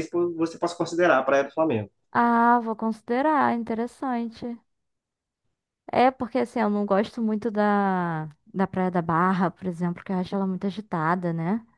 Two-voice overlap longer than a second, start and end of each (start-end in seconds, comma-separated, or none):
none